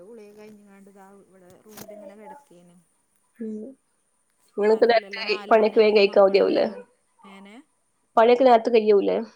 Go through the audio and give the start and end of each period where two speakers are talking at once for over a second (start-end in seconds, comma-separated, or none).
4.7-6.7